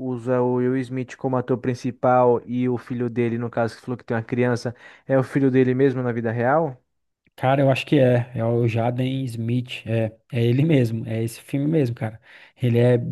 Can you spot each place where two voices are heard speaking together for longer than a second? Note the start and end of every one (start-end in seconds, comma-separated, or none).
none